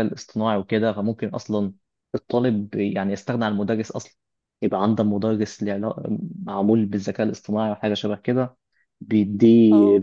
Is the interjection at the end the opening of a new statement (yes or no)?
no